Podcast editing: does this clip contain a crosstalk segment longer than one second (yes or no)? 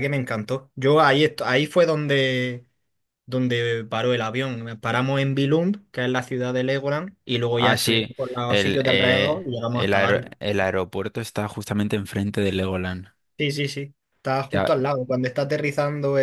yes